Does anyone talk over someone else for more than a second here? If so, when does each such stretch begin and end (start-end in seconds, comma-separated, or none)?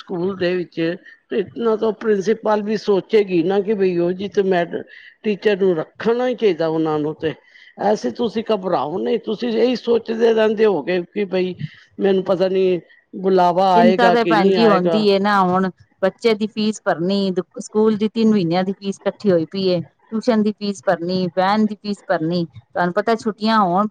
13.7-15.0